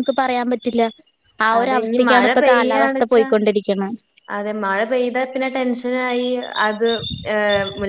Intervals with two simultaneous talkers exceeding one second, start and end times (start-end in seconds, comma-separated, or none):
1.6-3.3